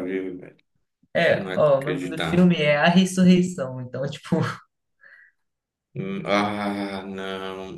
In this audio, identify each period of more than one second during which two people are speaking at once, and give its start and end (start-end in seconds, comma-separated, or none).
1.3-2.5